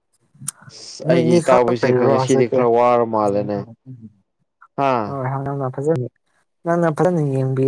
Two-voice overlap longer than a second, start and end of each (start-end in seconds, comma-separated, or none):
1.1-2.6